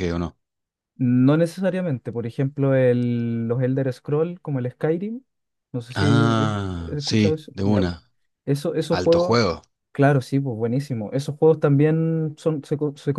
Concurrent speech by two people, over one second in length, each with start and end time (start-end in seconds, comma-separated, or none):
6.0-8.0